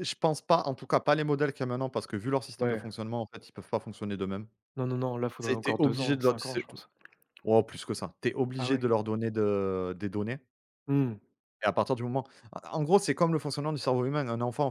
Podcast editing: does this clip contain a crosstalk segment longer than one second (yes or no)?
yes